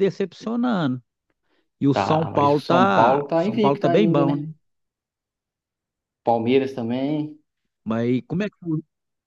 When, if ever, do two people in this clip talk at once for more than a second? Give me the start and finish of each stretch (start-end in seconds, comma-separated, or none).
1.9-4.5